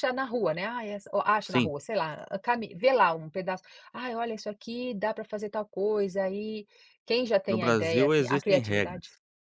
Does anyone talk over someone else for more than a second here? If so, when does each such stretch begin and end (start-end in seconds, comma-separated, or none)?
7.5-9.0